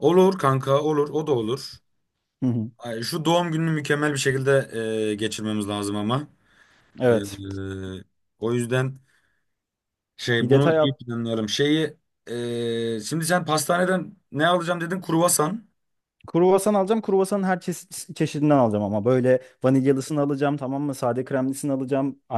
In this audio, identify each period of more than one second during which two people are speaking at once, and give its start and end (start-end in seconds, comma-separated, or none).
none